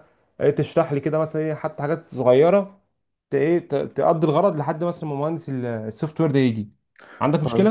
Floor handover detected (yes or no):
yes